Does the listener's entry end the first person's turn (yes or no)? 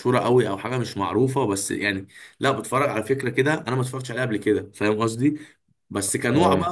no